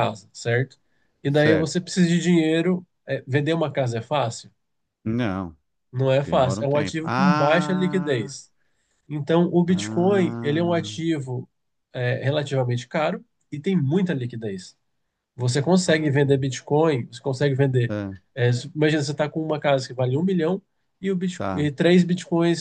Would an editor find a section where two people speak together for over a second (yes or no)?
yes